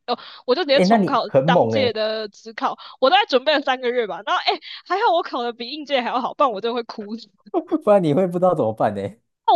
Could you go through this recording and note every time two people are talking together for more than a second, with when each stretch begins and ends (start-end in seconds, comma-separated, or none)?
0.7-2.0